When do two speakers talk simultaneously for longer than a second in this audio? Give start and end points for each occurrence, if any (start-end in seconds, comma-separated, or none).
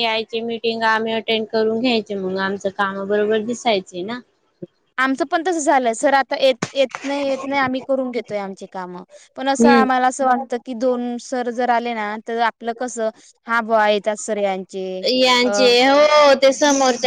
none